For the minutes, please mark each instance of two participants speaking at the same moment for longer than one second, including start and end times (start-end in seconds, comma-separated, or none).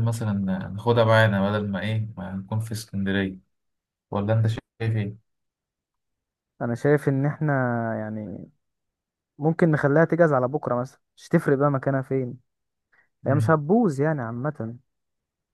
none